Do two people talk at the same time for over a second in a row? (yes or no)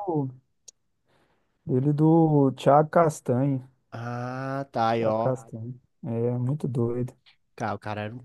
no